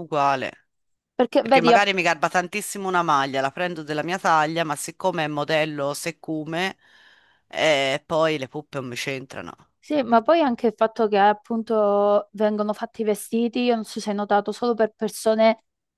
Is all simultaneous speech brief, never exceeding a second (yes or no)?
yes